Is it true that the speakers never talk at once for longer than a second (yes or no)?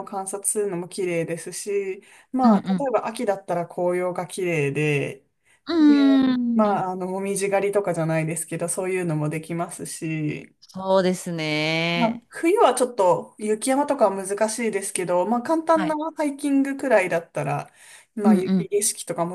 yes